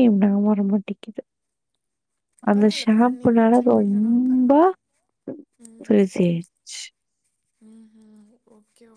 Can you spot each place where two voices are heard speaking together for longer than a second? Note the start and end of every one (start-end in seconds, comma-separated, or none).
2.5-4.5